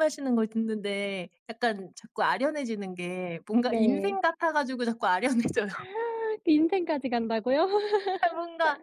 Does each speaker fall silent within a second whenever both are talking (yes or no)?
yes